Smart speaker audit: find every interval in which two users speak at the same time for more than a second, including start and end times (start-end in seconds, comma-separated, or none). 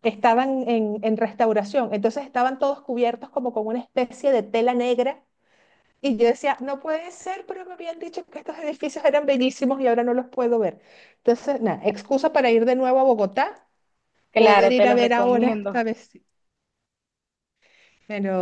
14.3-15.8